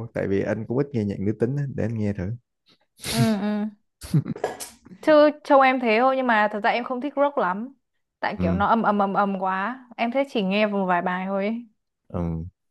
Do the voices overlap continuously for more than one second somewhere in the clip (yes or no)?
no